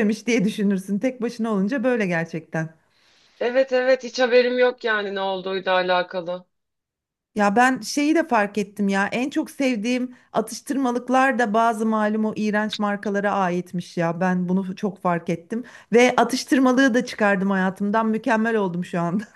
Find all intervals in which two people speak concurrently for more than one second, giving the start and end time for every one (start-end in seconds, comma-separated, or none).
none